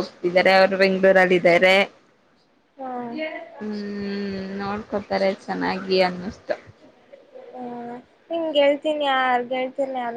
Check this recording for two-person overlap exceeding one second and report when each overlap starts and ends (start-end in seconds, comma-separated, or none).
none